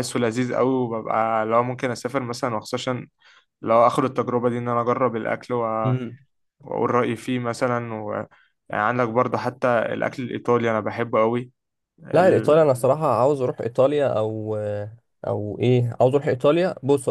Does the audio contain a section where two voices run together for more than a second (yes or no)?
no